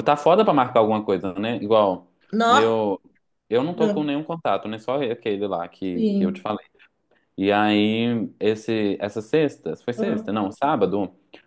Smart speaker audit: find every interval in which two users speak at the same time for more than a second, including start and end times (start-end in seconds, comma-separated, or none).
none